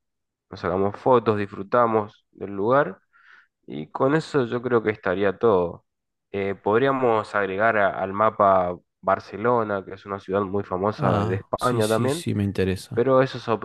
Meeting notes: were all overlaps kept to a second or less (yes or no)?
no